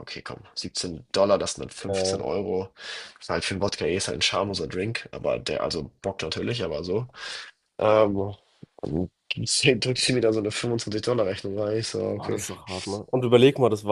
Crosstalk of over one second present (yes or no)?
no